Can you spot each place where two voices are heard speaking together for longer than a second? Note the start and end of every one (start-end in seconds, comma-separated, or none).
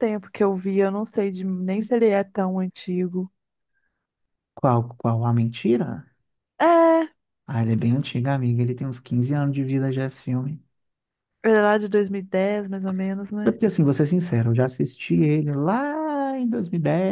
none